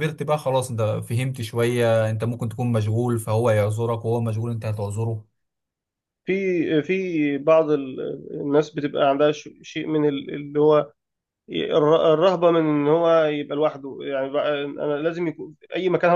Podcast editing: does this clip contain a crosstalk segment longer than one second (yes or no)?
no